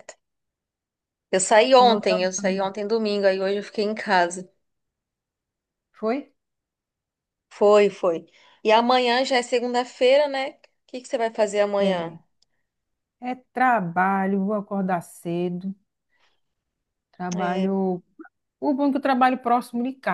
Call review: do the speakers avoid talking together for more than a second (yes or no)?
yes